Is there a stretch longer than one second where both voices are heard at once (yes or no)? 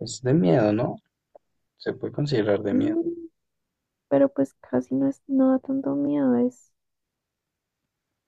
no